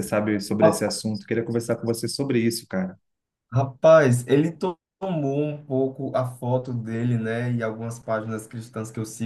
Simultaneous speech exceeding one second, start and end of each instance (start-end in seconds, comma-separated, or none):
none